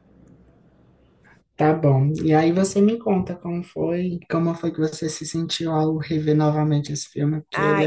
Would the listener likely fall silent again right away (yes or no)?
no